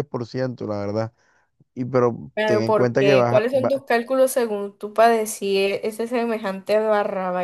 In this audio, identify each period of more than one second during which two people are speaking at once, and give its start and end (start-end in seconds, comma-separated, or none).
2.3-3.8